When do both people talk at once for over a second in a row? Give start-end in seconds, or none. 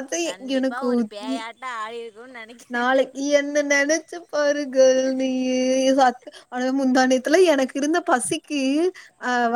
none